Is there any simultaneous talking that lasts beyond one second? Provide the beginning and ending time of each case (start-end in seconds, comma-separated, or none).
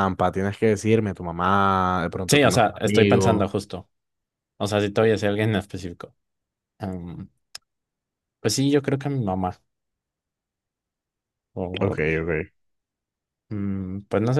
2.3-3.5